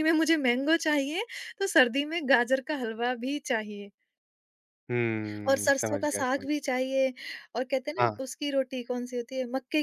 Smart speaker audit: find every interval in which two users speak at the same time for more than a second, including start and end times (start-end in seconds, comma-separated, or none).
5.5-6.8